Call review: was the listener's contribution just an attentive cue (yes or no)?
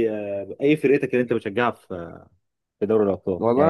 no